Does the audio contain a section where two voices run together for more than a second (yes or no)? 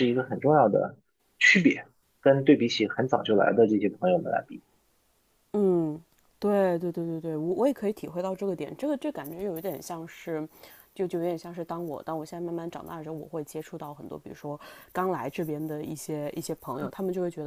no